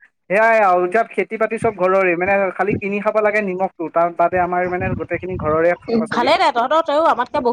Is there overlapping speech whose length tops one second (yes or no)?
no